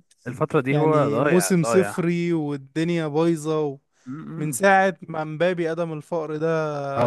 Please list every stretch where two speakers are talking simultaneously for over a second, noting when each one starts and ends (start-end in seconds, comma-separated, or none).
0.7-2.0